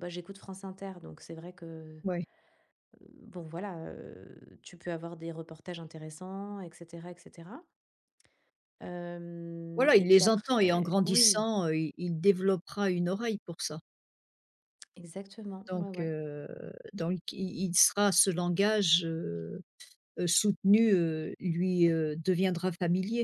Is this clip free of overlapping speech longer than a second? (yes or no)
no